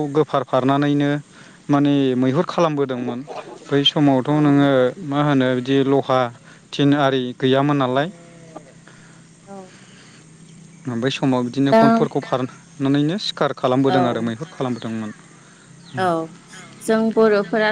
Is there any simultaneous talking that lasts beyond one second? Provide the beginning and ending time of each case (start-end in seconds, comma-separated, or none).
none